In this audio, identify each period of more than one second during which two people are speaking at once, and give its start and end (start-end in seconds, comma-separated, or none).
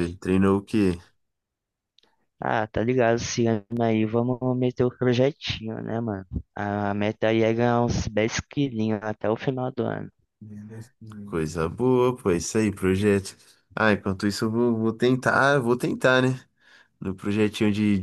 none